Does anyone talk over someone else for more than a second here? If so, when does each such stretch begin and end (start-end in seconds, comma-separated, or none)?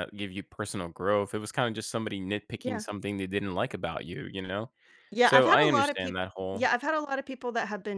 5.2-6.7